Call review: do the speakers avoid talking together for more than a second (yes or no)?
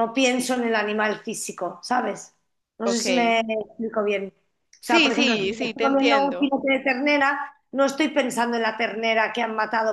no